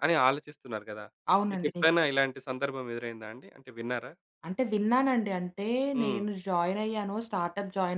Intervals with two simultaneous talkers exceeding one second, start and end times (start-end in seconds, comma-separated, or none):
none